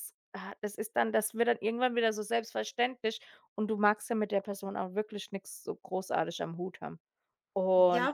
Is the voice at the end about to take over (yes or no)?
yes